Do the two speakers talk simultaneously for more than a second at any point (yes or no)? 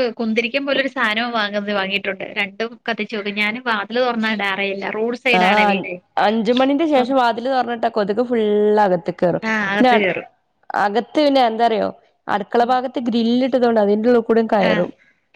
no